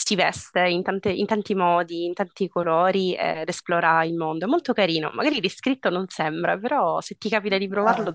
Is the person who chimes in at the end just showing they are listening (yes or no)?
no